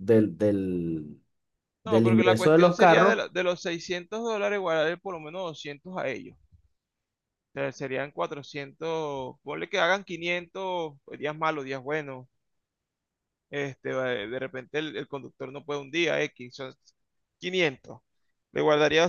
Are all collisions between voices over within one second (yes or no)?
no